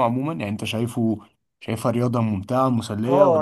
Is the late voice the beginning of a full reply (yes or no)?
yes